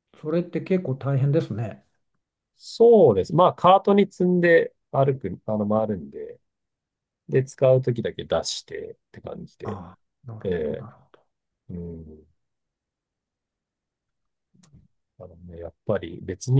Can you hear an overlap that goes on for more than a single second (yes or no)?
no